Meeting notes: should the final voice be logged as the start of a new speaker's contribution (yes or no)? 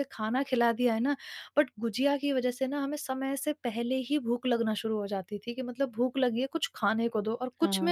yes